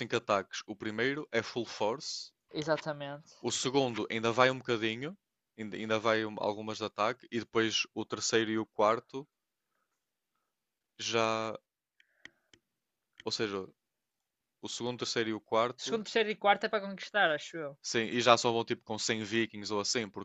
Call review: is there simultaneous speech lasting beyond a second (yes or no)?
no